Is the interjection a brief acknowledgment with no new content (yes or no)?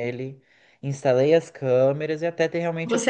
no